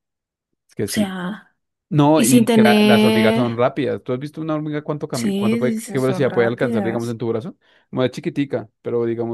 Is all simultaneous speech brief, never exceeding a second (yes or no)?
no